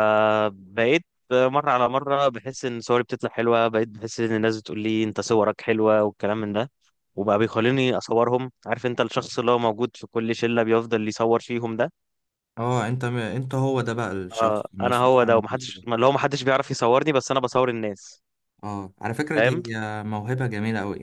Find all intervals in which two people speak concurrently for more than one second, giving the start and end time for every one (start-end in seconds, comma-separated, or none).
14.3-15.8